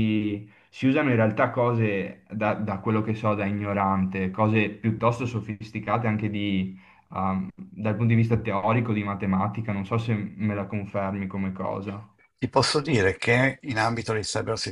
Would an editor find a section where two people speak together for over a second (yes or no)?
no